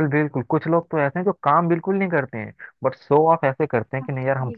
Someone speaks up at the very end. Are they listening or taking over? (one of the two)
listening